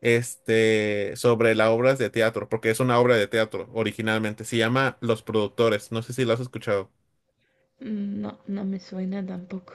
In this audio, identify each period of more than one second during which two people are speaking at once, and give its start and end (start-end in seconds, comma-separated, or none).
none